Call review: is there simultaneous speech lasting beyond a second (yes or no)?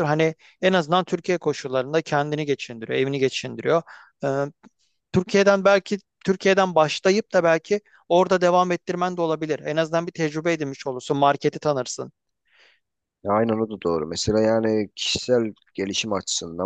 no